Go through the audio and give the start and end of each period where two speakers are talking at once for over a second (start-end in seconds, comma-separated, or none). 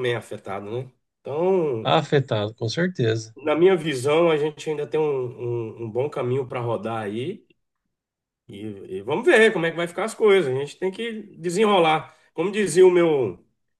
none